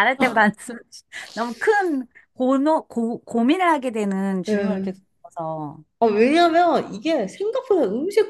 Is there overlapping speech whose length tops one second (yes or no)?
no